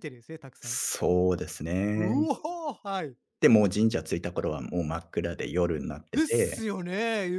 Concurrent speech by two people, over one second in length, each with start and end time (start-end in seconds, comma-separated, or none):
none